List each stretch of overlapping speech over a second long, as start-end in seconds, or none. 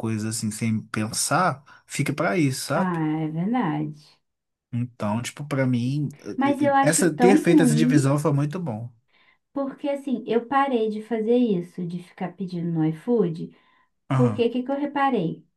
6.8-8.2